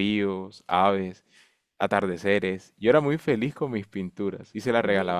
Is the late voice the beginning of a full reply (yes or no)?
yes